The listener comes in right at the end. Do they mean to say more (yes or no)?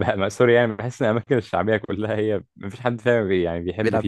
yes